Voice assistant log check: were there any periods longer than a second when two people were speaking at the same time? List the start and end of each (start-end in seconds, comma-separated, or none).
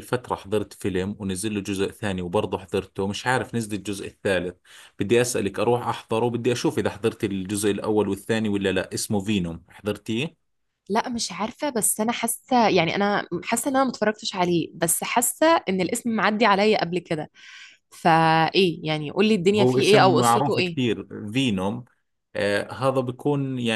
19.6-20.8